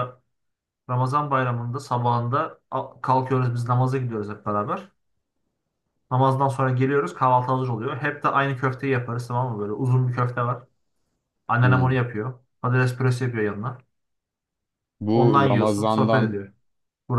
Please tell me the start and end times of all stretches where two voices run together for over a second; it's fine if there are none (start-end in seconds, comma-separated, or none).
15.1-16.4